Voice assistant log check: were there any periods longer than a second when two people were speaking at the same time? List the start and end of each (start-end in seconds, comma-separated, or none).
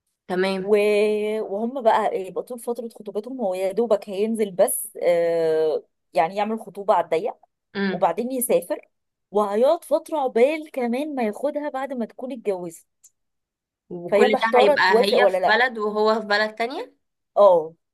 14.1-15.6